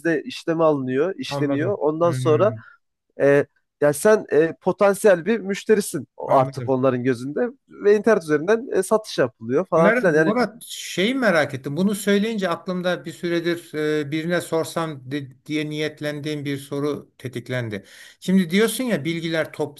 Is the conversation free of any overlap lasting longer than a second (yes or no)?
no